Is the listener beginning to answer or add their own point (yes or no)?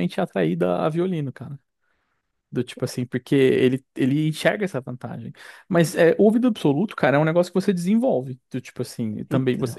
no